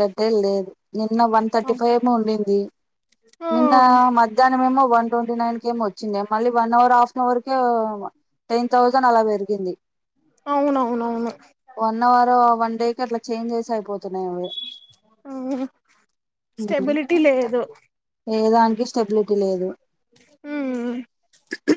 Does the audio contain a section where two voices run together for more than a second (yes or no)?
no